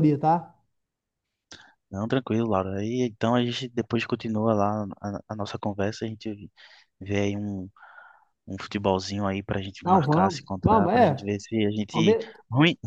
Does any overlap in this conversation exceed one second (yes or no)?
yes